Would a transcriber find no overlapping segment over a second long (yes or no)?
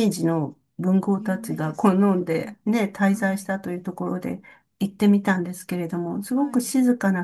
no